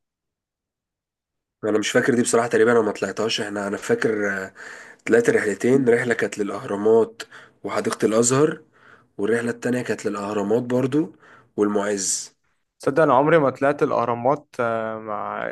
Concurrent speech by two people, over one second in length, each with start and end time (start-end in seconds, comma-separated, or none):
none